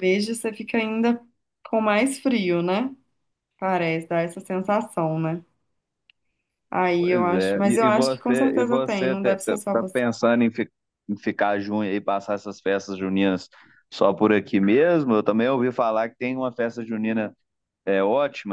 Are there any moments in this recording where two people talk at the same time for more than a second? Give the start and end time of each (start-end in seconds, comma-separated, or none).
7.0-10.0